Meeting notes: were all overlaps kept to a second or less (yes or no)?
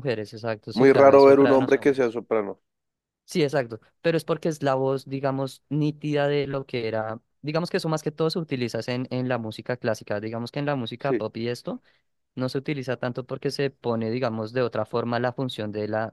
no